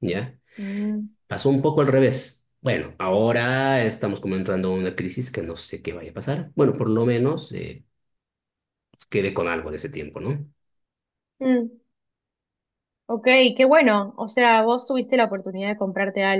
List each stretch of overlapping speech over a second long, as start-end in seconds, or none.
none